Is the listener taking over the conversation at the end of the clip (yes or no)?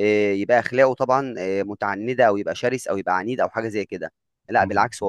no